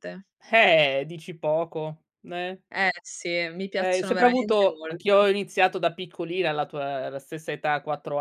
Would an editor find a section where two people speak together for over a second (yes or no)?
yes